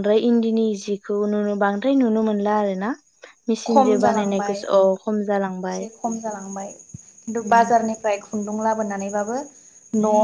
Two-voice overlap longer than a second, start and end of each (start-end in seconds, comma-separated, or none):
3.7-5.8